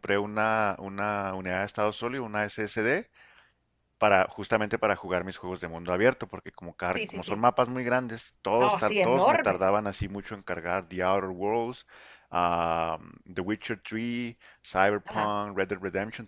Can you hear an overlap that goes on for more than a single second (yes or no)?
yes